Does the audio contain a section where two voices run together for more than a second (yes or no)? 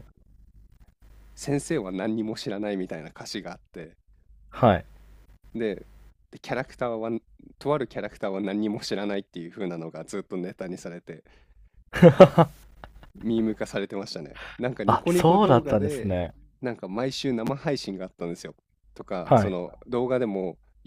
yes